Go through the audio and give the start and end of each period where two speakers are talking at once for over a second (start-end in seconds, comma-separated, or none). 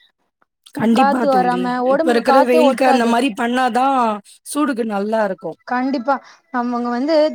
1.0-3.1